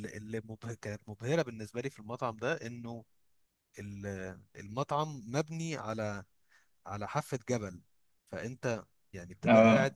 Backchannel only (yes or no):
yes